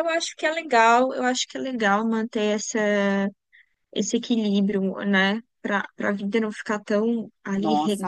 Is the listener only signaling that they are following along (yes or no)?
no